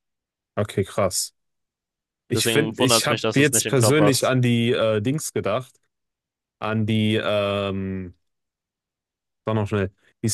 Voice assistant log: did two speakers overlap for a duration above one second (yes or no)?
yes